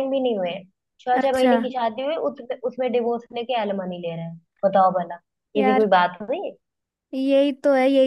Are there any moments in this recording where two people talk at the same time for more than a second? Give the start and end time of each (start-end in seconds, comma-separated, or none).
none